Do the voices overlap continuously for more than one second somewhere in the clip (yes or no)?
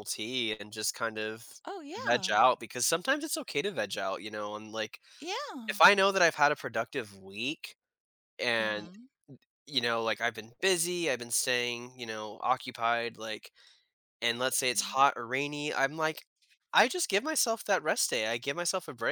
no